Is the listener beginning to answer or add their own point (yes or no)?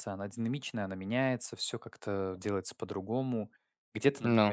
no